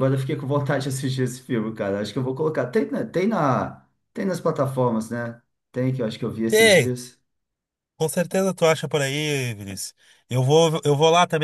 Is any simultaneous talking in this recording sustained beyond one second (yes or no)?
no